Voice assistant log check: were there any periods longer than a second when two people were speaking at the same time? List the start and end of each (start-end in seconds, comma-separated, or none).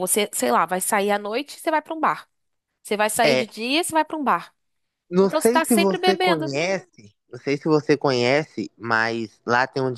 5.2-6.5